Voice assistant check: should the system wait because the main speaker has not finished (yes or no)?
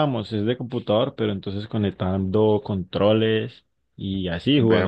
yes